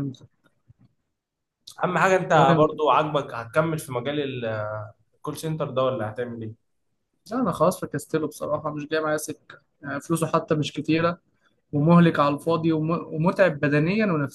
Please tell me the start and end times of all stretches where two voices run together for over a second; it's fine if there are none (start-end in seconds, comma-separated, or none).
none